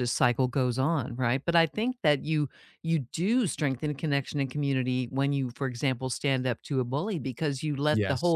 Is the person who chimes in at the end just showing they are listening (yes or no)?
yes